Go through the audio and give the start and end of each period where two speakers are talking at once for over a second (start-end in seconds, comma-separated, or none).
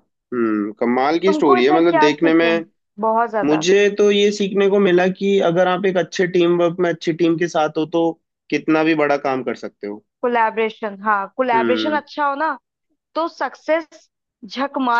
1.2-2.6